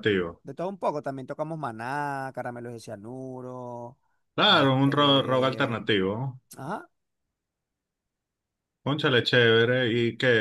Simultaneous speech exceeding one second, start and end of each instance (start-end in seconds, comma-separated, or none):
4.4-5.8